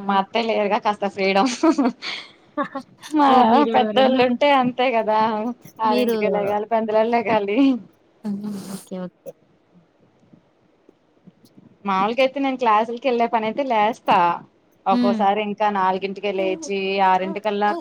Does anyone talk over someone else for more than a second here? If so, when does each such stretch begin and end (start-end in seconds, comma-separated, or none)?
none